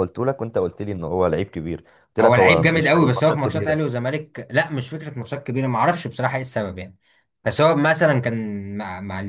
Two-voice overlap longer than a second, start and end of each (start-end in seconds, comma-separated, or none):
2.2-3.8